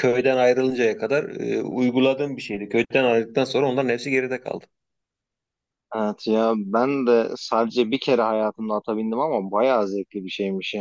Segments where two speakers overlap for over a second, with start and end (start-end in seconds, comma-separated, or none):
none